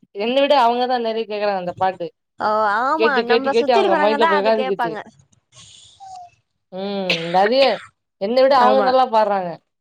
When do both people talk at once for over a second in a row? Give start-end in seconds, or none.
3.0-4.9